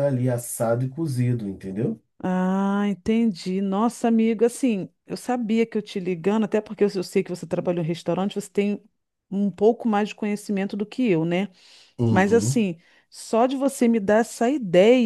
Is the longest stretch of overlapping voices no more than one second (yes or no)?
yes